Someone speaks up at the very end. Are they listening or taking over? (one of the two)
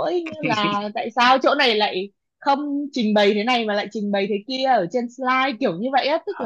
listening